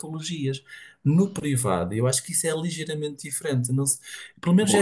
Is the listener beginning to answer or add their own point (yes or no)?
yes